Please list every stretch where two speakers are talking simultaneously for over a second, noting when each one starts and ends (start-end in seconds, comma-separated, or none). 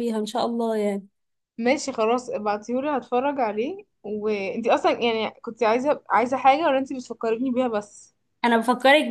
none